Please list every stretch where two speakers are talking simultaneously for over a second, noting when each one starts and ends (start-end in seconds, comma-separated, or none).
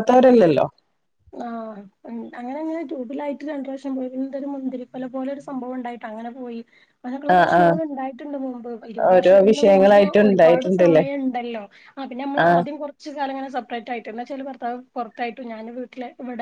9.1-11.0